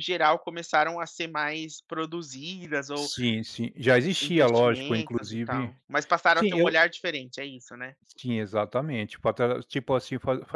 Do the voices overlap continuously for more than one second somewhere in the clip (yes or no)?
yes